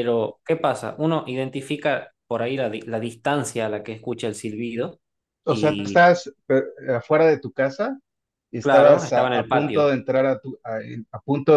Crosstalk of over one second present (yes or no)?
yes